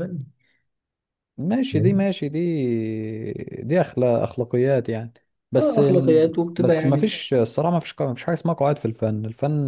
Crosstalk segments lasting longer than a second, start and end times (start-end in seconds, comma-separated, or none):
5.6-7.1